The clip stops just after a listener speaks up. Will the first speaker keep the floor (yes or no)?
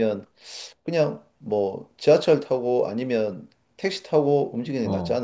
no